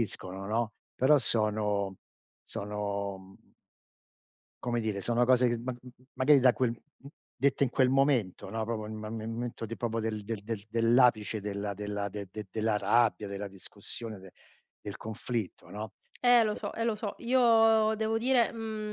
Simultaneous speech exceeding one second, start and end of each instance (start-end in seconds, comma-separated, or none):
none